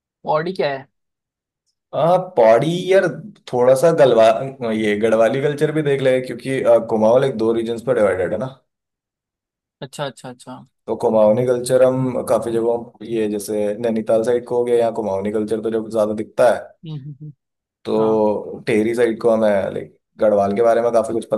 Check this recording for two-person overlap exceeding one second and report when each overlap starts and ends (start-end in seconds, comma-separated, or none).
none